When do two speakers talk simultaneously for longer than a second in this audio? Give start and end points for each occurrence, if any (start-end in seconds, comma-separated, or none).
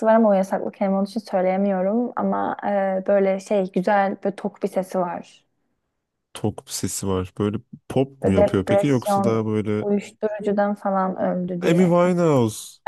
8.2-9.8